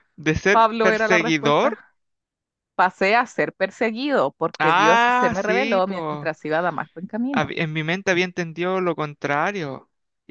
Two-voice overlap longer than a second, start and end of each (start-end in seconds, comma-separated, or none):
0.5-1.8, 4.6-6.3